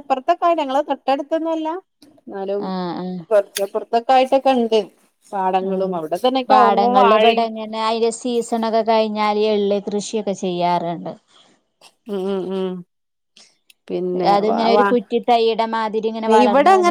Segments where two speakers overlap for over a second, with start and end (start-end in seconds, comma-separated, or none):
none